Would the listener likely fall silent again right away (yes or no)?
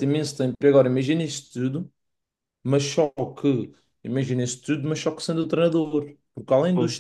yes